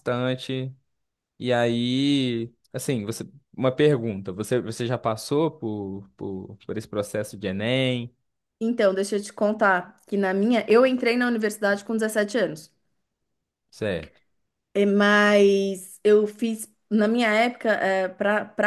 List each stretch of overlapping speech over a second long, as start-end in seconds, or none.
none